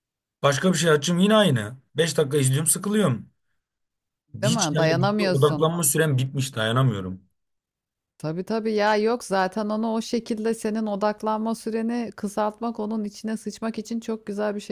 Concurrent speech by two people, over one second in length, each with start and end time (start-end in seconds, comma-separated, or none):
4.4-5.7